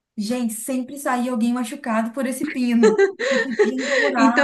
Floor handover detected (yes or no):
yes